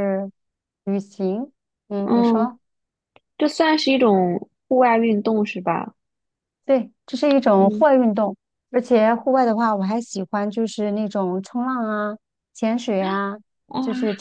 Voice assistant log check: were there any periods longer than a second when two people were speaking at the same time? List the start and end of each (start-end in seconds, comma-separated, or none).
none